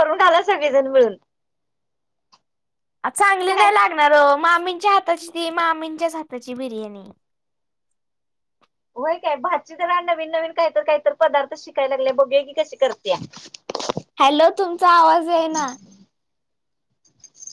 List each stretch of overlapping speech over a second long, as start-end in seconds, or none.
none